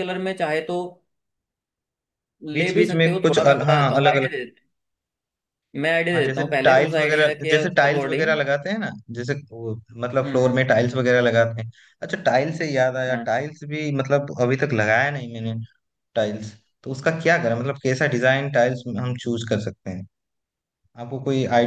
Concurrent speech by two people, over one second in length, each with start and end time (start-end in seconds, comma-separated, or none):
2.5-4.3, 6.1-8.4